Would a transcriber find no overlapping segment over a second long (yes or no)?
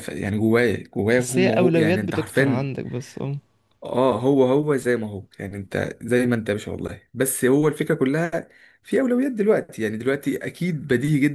no